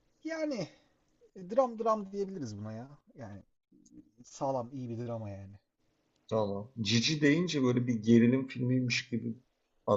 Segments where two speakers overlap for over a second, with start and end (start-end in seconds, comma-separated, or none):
none